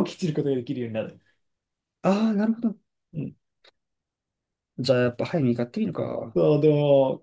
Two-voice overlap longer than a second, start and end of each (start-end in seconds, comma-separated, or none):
none